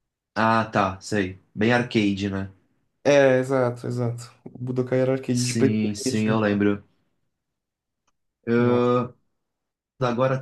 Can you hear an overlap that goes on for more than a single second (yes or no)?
yes